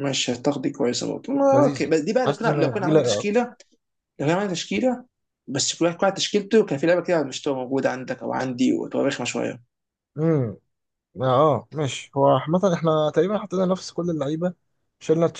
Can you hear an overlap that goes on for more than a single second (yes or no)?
yes